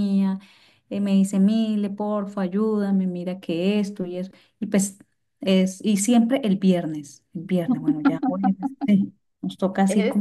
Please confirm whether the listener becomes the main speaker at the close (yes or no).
yes